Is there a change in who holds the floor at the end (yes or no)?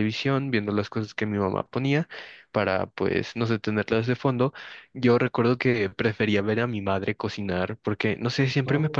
no